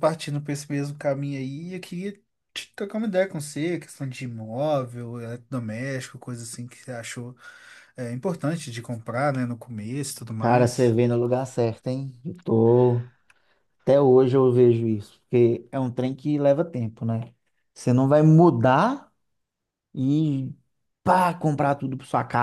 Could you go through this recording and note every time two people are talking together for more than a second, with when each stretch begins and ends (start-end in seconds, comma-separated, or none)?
none